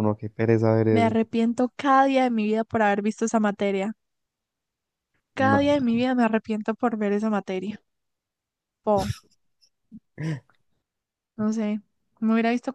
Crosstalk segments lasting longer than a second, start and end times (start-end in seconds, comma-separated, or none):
none